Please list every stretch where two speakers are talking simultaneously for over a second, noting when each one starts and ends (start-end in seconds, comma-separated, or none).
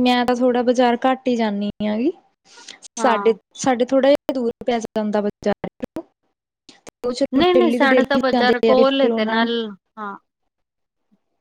7.9-9.5